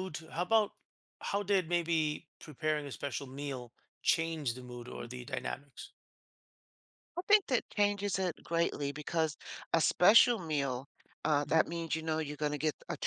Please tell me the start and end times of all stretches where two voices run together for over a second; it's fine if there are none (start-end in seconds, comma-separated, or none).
none